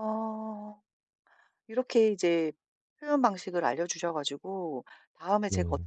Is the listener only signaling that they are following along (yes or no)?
yes